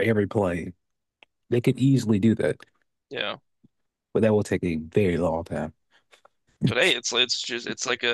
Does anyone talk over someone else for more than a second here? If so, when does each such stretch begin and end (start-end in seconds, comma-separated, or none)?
none